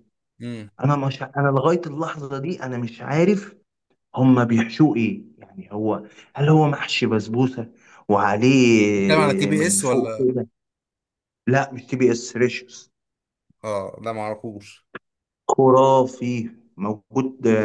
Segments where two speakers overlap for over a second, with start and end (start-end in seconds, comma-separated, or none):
9.0-10.2